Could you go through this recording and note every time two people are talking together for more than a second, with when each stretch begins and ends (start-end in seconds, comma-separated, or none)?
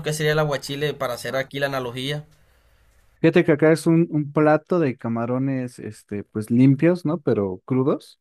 none